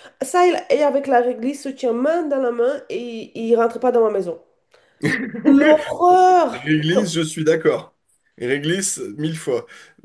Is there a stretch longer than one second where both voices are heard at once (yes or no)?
no